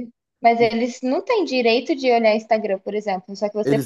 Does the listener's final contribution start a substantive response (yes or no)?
yes